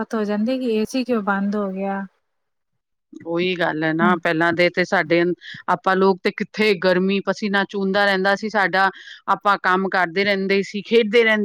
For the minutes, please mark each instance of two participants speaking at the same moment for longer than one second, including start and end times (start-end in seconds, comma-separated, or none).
none